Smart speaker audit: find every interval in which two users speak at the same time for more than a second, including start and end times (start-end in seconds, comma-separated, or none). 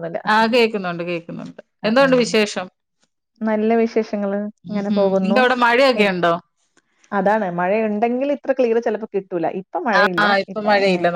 none